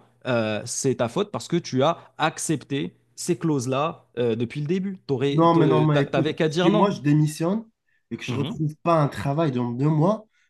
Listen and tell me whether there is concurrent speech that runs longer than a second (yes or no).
yes